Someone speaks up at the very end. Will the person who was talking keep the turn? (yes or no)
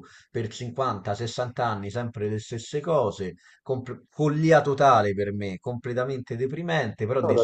yes